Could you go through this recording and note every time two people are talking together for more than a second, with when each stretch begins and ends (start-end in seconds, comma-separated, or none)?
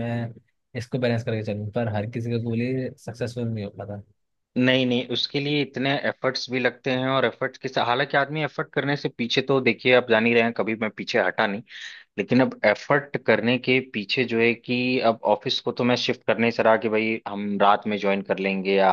none